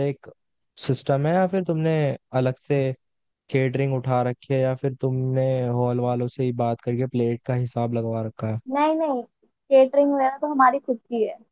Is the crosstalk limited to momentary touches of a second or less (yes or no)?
yes